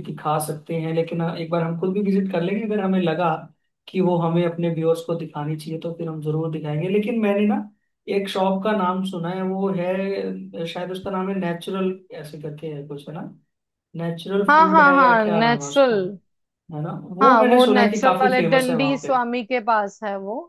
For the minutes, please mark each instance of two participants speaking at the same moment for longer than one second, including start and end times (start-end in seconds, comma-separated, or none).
14.5-15.9, 17.2-19.2